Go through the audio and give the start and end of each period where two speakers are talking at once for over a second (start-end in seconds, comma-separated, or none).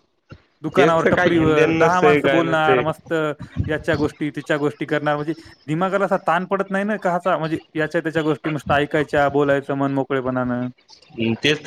0.8-2.8